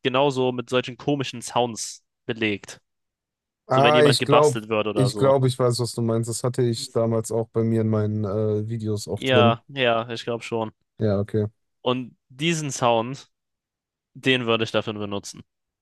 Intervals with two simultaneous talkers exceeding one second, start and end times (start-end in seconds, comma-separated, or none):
3.7-5.3